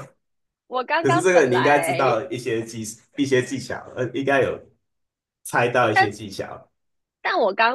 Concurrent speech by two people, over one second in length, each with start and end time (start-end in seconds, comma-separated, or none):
1.0-2.2